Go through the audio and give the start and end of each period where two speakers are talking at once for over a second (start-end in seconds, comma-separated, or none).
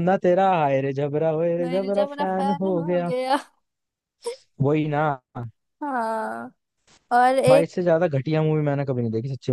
1.6-3.1